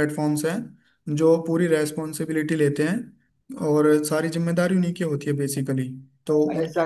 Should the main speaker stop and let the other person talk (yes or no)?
yes